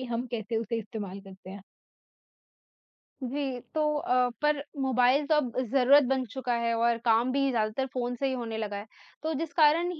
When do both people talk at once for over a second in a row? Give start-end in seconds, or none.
none